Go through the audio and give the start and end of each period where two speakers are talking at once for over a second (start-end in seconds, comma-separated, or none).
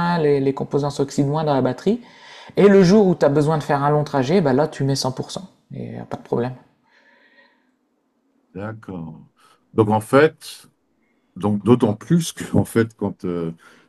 none